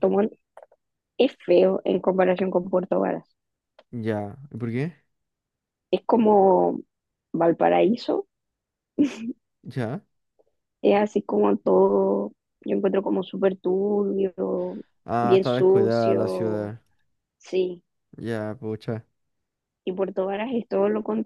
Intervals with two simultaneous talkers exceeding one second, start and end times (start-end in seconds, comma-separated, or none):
15.2-16.7